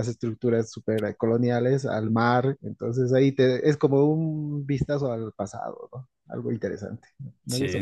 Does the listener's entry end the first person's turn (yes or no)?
yes